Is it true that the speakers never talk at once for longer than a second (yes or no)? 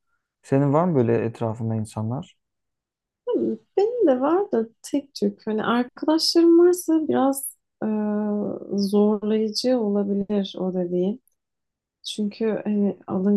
yes